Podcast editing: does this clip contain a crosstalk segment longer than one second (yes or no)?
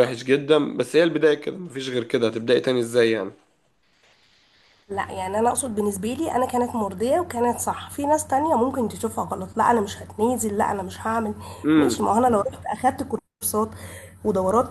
no